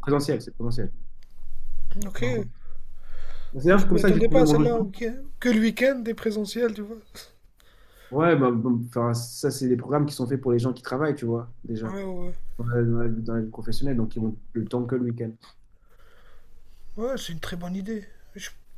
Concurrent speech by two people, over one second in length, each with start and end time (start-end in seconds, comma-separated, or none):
3.7-4.9